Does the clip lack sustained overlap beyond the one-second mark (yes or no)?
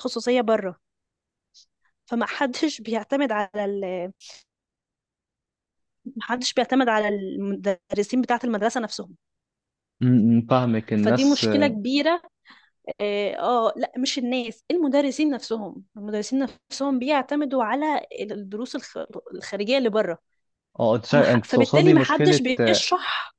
no